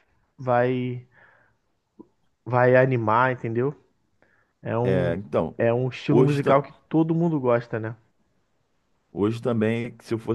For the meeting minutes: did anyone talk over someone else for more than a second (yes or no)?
no